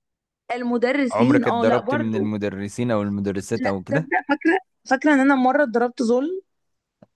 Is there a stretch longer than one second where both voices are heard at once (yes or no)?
yes